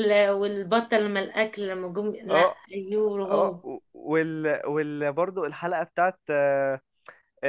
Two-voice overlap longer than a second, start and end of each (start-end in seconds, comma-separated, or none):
none